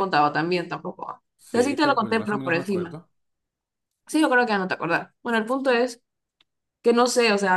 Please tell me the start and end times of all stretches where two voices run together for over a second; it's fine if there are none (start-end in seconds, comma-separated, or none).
1.4-3.0